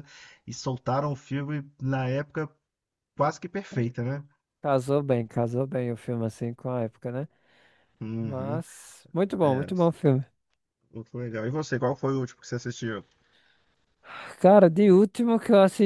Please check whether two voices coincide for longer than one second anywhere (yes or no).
no